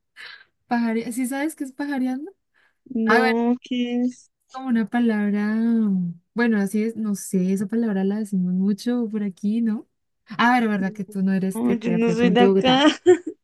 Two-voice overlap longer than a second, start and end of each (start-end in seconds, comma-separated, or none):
11.5-12.8